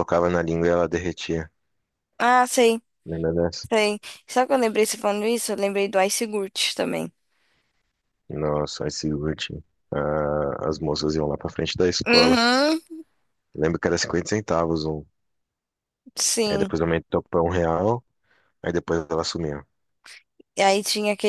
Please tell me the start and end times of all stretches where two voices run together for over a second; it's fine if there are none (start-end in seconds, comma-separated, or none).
none